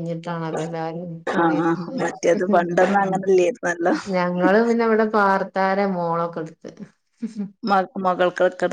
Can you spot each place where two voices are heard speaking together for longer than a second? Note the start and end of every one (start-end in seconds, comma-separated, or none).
none